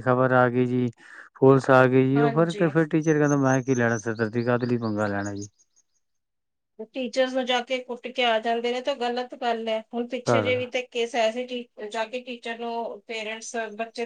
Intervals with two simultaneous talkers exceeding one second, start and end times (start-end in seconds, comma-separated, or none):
none